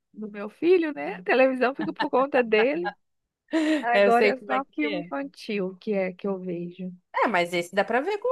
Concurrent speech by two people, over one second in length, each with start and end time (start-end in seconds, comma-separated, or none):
3.9-5.2